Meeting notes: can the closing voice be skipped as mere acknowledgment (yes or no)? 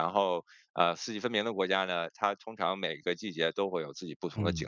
no